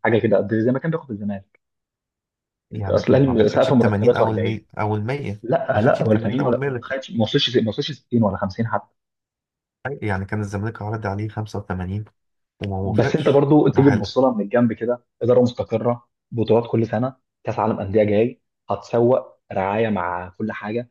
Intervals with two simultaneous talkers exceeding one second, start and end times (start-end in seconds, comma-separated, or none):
2.9-4.6, 5.4-6.9, 12.8-14.1